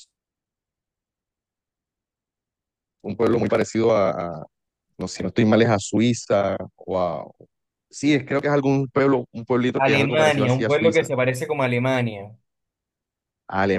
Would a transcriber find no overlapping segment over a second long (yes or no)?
no